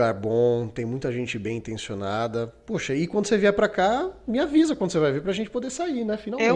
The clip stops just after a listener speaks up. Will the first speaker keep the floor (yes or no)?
no